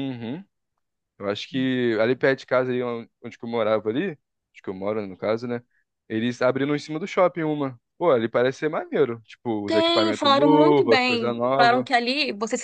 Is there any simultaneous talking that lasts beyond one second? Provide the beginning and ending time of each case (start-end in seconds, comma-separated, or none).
9.7-11.9